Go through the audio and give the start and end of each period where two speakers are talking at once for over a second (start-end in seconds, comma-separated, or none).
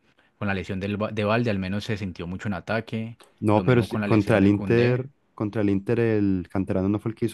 3.4-5.0